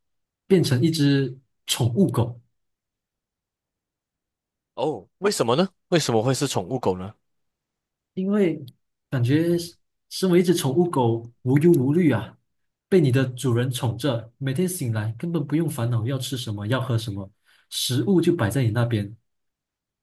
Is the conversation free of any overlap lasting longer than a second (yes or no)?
yes